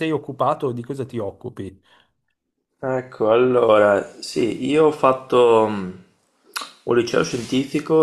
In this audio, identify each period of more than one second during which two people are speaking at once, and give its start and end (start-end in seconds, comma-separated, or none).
none